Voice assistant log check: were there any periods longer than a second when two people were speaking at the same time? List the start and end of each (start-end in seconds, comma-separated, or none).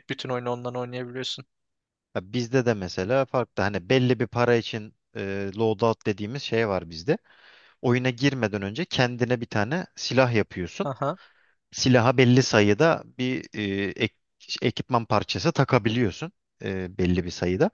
none